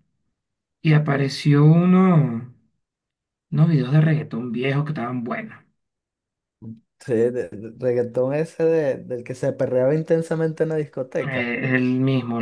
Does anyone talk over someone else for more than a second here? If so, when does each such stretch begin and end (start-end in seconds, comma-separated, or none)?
none